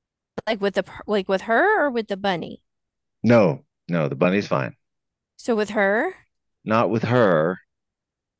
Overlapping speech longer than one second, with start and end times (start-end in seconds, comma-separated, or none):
none